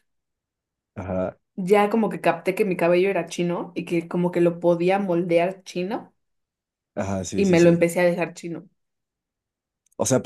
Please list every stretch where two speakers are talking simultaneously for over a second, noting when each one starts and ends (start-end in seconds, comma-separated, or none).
none